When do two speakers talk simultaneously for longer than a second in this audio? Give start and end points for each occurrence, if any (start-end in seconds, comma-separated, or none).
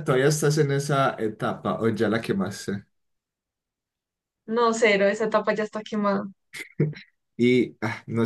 none